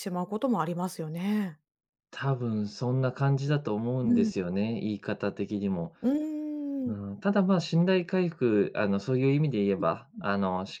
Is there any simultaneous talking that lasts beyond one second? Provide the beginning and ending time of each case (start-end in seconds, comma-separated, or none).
none